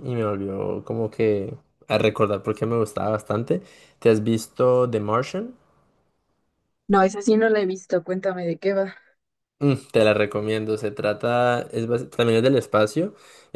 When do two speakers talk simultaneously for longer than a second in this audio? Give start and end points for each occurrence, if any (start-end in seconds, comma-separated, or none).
none